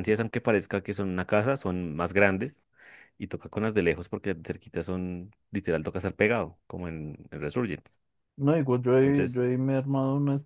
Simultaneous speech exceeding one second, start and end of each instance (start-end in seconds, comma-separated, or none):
none